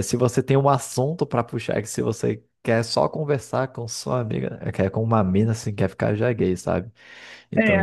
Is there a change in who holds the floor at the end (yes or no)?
no